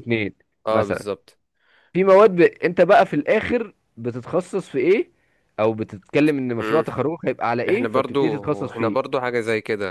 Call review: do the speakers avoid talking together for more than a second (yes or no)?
no